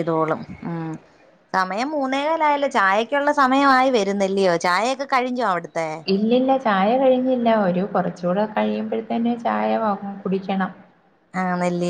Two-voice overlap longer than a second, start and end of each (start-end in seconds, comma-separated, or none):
none